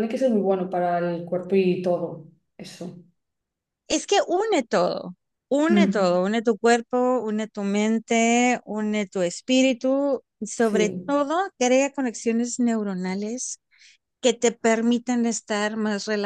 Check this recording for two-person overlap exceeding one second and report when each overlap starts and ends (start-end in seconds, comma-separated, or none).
none